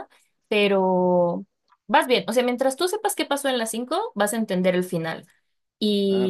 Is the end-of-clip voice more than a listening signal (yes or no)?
no